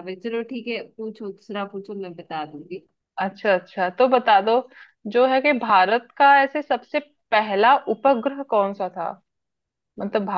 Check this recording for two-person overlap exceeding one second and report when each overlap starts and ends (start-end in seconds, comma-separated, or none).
none